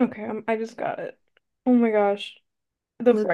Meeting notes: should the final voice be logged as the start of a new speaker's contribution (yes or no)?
no